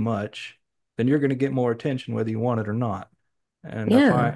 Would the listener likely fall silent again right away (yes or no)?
yes